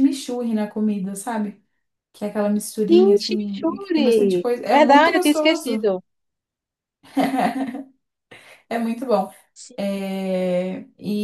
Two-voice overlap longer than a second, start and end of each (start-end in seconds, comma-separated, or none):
2.9-5.9